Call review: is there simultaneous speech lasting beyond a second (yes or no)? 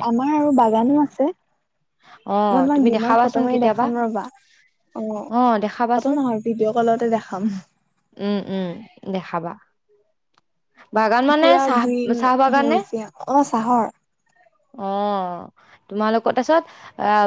yes